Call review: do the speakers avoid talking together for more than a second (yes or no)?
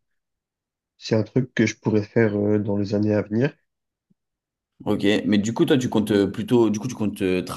yes